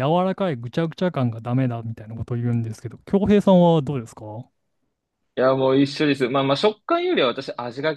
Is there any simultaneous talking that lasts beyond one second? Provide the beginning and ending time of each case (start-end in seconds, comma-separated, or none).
none